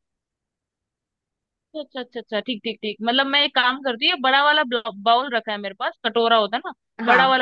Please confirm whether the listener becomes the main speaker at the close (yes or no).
no